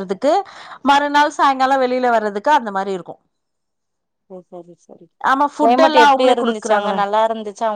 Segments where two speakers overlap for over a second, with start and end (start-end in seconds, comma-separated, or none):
5.6-7.0